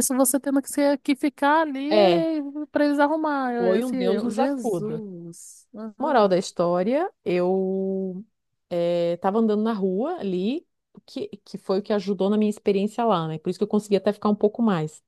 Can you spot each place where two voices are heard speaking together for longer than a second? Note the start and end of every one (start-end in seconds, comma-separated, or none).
3.6-5.0